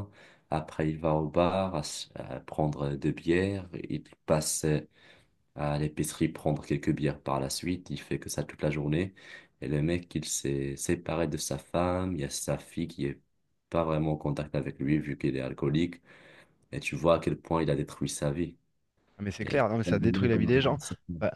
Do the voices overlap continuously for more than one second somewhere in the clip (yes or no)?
yes